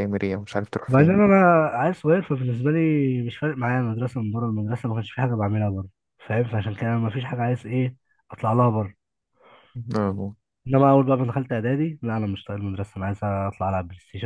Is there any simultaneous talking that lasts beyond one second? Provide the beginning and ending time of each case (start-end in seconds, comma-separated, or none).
none